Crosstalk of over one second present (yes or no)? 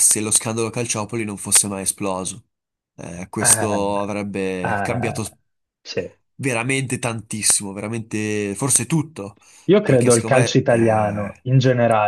yes